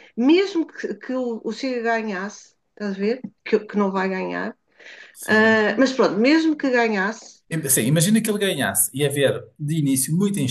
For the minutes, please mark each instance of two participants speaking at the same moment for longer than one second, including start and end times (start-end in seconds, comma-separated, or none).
none